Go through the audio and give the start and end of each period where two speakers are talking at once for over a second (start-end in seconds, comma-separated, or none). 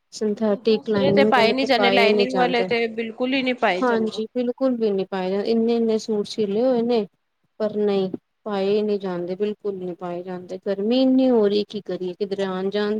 0.7-2.7